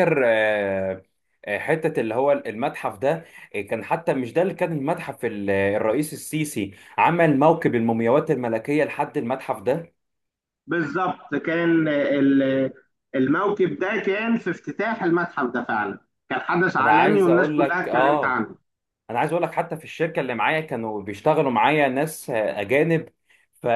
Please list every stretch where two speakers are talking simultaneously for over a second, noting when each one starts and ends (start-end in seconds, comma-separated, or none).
16.8-18.4